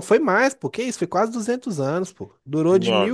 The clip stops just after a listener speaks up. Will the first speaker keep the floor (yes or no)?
yes